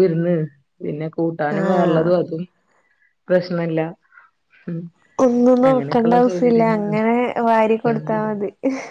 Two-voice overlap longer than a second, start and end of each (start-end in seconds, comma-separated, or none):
5.7-7.0